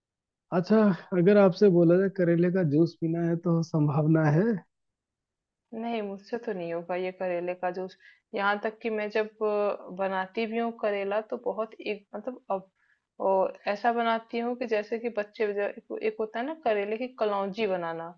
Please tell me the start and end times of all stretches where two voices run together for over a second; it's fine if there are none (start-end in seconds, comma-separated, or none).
none